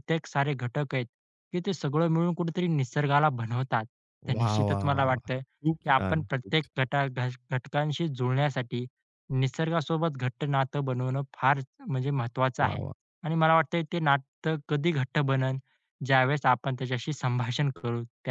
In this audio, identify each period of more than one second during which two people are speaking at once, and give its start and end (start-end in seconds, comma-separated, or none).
4.3-6.9